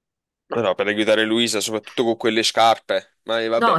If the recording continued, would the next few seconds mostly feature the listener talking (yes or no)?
yes